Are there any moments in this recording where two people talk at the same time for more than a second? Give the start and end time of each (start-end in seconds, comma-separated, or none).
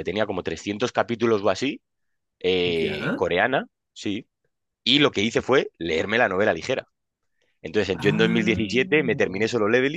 7.9-9.3